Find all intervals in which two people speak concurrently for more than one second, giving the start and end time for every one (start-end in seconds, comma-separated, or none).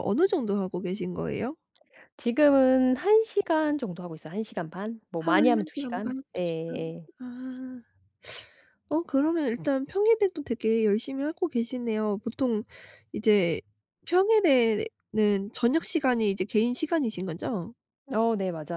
5.2-7.1